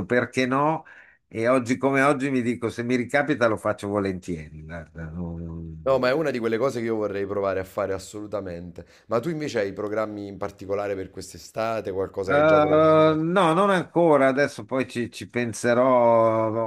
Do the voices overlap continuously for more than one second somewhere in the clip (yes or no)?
no